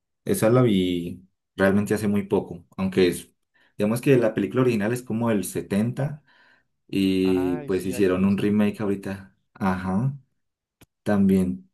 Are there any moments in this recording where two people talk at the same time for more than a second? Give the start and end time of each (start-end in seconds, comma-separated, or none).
7.2-8.9